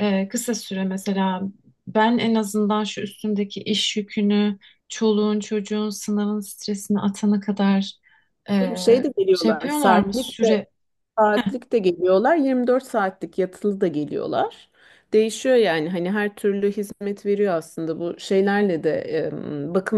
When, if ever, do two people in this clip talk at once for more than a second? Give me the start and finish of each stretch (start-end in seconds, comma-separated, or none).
9.3-10.6